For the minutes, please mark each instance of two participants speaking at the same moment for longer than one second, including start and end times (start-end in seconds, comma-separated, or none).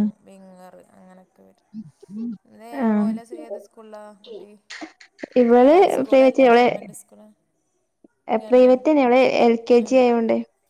none